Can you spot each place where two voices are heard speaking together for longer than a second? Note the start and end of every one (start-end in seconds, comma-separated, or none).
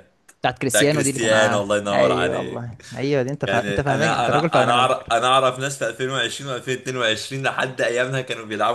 0.7-2.8, 3.5-5.1